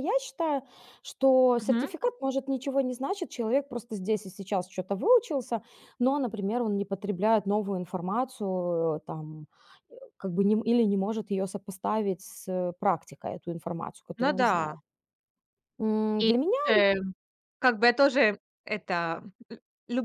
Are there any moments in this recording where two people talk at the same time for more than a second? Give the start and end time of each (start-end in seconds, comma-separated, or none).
none